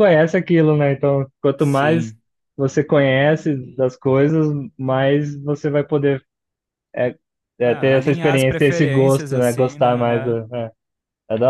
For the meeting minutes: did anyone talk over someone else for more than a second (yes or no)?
yes